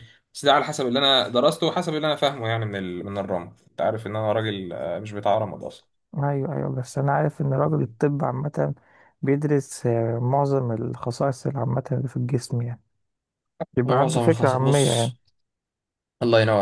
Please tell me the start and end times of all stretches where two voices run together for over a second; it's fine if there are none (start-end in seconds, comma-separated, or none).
13.8-15.1